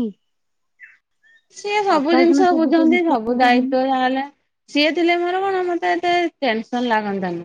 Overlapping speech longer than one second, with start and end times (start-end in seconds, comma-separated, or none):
2.0-3.7